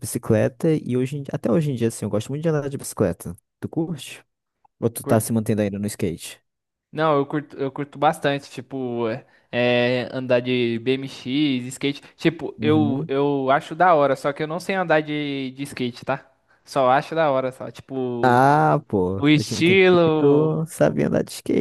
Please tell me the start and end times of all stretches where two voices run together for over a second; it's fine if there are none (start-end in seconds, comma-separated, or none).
19.2-20.5